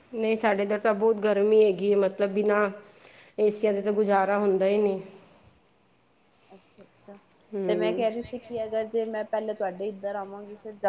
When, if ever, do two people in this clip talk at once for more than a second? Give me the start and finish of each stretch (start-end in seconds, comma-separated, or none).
none